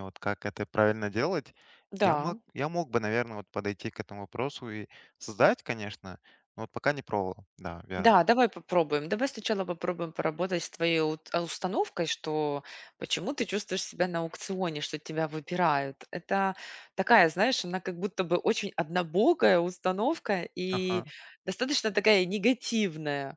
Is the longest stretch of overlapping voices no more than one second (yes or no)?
yes